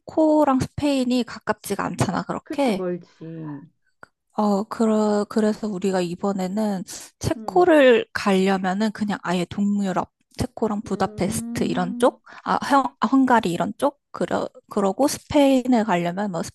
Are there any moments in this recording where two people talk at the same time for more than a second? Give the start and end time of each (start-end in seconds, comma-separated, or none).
10.8-12.2